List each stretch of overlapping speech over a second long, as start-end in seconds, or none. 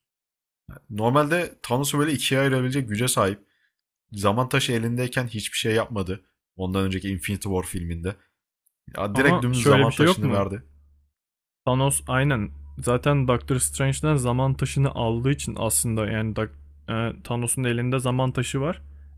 9.1-10.5